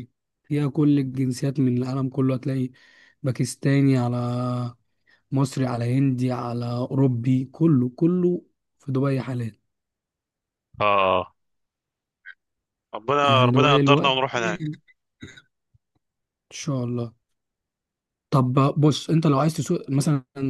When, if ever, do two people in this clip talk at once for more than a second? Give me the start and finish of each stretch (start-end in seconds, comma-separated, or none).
13.2-14.6